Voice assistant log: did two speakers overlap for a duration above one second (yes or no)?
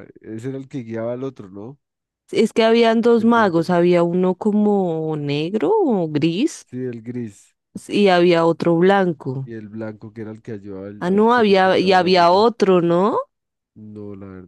yes